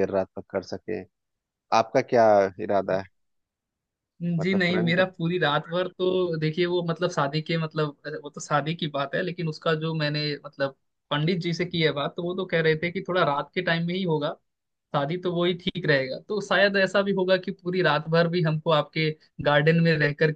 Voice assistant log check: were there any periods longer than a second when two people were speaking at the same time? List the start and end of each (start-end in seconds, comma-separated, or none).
none